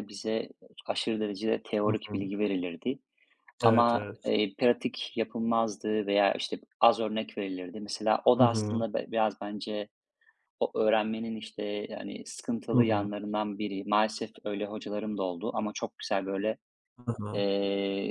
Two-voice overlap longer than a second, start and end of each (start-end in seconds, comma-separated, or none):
none